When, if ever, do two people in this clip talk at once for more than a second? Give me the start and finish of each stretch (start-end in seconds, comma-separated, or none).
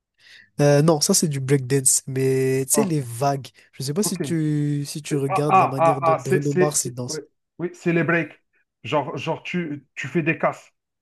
5.1-7.2